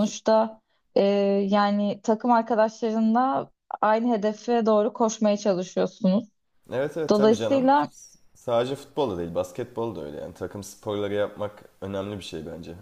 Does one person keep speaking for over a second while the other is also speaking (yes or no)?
no